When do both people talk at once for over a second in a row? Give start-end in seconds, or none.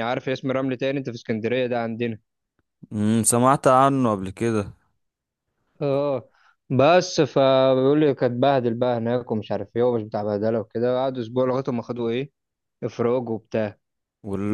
none